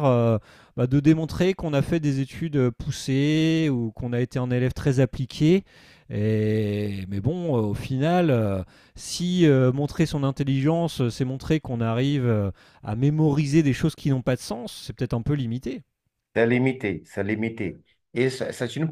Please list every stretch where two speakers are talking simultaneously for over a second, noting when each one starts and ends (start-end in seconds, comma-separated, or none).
none